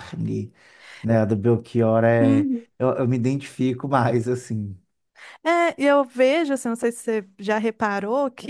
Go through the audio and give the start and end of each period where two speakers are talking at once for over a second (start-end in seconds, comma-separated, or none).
none